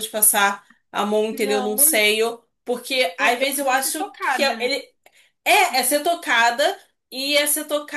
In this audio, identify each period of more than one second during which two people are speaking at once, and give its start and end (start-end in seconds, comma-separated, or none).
3.2-4.7